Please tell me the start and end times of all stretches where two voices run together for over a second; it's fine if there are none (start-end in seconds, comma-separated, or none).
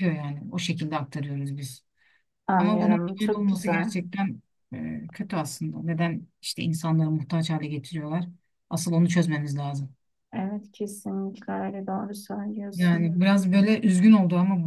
2.5-3.9